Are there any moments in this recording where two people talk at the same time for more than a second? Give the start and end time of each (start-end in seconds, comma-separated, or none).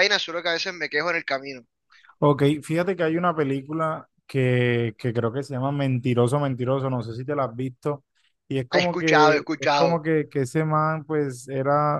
8.7-10.0